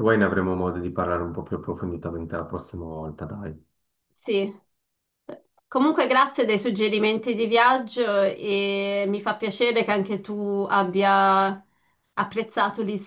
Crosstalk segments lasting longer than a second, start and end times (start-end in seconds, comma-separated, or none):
none